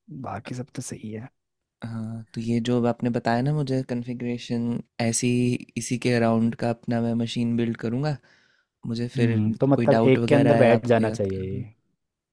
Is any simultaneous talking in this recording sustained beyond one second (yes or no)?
yes